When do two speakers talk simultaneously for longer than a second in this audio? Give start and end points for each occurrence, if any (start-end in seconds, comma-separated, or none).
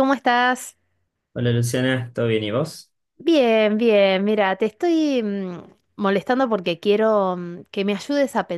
none